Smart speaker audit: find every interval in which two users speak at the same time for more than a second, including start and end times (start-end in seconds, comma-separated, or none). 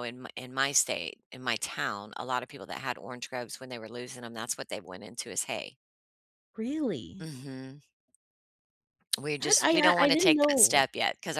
9.4-10.8